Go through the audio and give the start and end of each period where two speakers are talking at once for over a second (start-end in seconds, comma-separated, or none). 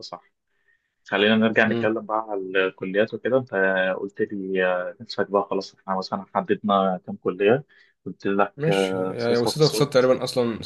8.6-9.9